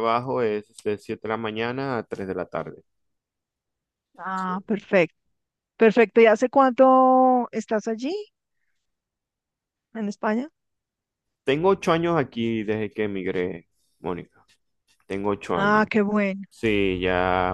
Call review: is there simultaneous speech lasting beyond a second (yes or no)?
no